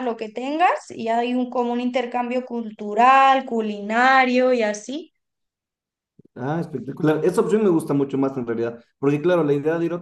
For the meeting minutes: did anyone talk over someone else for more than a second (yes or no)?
no